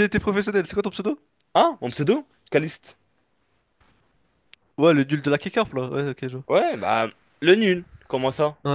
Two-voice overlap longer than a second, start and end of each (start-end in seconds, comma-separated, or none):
none